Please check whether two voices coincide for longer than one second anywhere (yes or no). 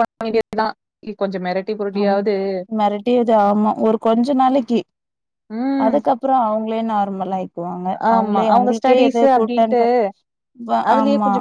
yes